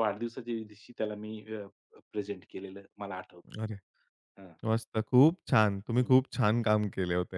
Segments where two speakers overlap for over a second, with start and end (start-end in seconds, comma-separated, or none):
none